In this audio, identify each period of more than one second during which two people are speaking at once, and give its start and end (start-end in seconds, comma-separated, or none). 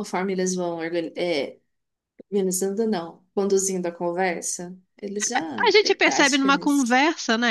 5.6-7.0